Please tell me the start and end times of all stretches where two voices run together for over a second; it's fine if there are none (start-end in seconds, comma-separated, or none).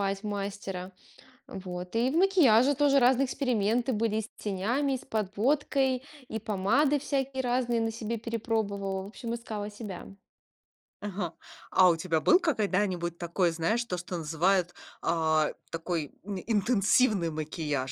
none